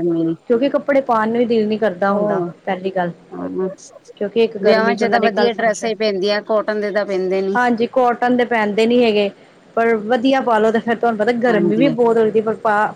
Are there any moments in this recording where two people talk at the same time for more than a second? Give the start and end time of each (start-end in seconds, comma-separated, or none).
4.6-5.9